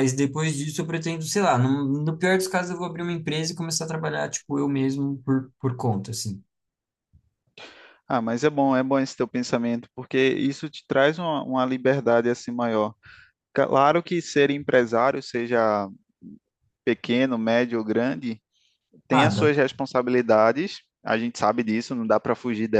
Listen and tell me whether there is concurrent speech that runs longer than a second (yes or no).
no